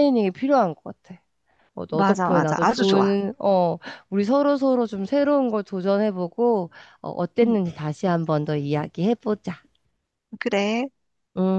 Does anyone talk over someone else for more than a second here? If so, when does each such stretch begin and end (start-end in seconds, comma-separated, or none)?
1.9-3.2